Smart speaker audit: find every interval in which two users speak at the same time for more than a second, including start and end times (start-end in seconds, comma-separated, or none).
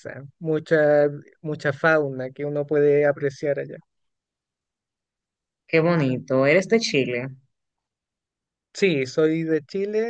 none